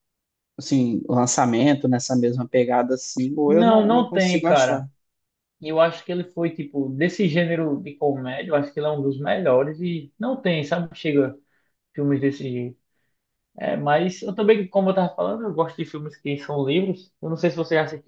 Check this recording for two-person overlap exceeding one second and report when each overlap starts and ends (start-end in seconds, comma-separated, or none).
3.5-4.9